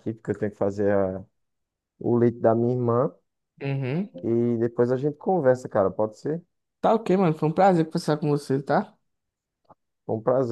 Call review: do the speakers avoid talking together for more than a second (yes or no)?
yes